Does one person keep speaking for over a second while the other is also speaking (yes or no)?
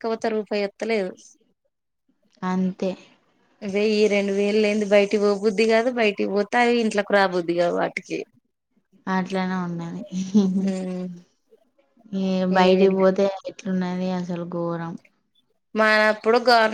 no